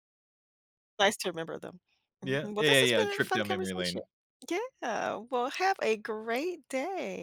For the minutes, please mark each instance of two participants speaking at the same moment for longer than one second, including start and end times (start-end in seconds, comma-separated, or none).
2.2-4.0